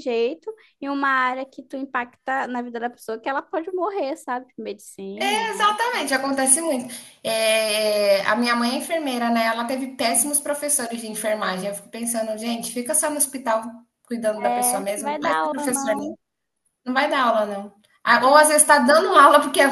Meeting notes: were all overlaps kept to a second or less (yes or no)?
no